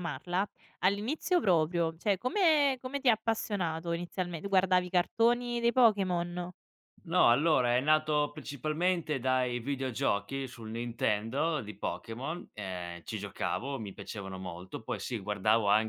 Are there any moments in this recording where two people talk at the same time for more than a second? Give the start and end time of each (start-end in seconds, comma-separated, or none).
none